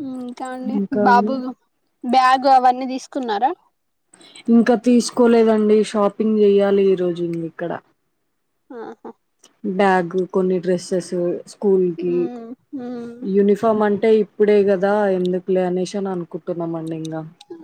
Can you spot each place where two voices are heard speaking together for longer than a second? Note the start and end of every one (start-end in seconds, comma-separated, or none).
none